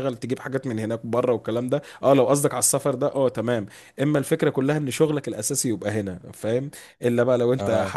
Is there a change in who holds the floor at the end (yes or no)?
no